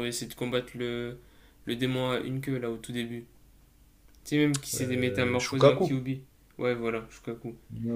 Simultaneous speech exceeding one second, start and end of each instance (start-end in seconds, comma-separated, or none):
4.8-6.0